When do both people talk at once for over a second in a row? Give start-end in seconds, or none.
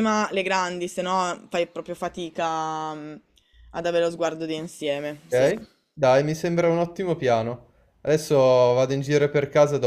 none